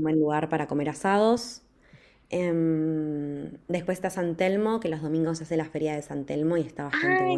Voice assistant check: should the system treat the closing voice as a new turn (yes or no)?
yes